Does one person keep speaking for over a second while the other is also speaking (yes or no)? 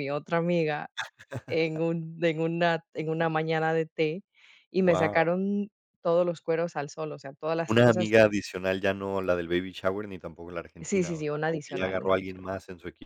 yes